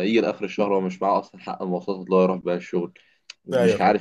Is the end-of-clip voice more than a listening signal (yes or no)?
no